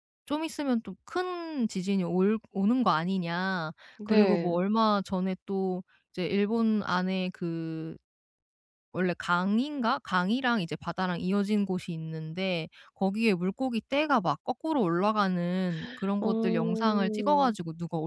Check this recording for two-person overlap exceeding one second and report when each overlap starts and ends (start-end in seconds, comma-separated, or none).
16.2-17.5